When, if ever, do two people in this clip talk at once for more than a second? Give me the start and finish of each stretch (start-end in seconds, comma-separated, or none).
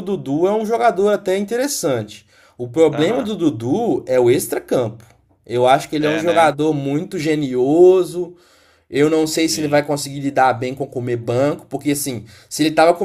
none